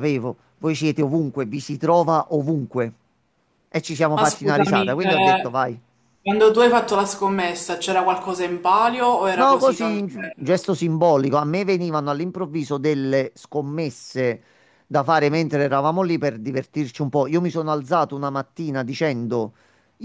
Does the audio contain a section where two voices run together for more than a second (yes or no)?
yes